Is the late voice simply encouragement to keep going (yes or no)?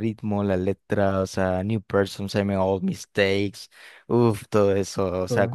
yes